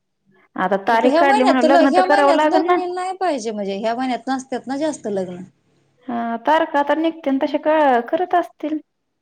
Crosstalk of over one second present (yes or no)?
yes